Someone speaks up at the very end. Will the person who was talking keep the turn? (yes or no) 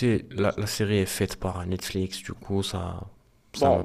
no